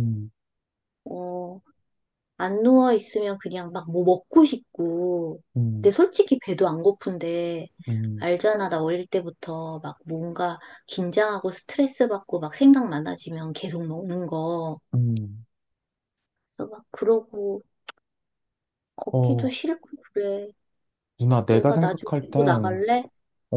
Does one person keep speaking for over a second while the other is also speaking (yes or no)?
yes